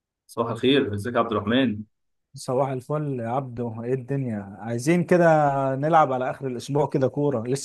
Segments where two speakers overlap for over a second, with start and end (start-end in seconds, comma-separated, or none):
none